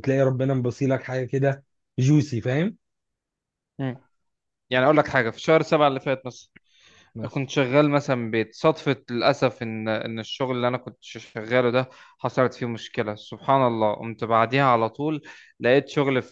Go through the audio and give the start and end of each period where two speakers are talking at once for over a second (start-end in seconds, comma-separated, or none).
none